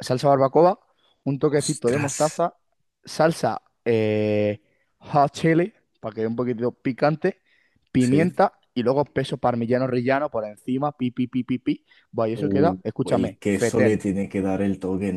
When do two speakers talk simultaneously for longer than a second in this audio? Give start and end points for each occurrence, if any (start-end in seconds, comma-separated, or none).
12.3-14.0